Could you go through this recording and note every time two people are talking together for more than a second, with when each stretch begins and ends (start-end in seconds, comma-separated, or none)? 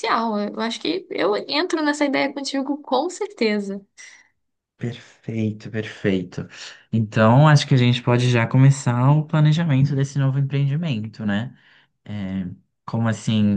none